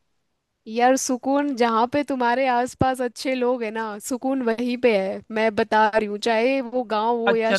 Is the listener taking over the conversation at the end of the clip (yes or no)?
yes